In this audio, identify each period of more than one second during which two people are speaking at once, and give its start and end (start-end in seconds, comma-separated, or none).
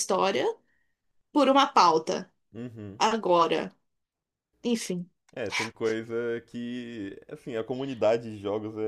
none